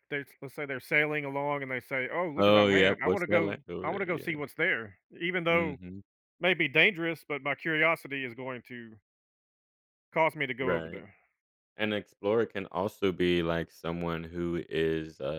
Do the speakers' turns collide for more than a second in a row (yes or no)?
yes